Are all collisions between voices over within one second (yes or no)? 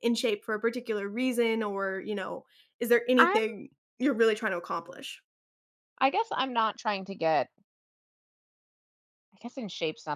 yes